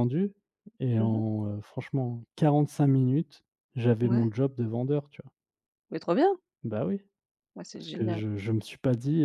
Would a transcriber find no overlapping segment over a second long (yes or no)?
yes